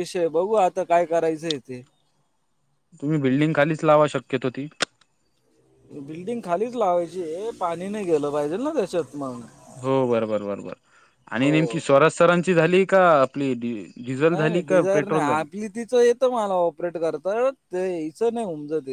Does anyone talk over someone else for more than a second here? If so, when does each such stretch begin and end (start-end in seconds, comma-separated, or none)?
14.2-15.4